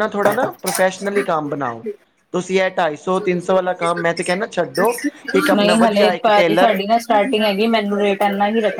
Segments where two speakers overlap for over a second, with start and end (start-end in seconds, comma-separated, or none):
none